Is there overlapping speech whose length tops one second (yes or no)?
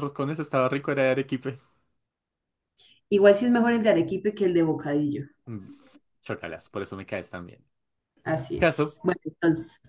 no